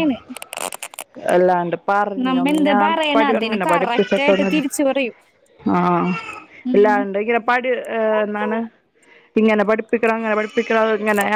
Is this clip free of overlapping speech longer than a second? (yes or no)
no